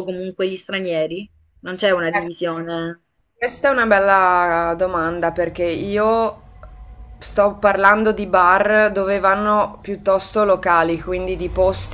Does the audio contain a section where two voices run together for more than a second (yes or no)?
no